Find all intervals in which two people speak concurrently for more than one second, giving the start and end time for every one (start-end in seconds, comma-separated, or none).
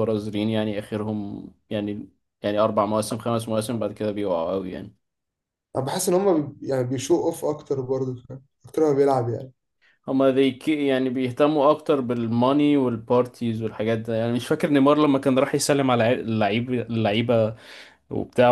none